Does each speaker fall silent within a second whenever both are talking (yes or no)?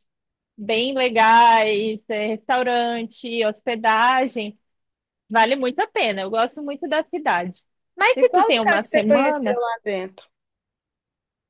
no